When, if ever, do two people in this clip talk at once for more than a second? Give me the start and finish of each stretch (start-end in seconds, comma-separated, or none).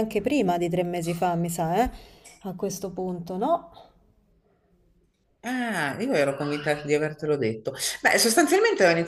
none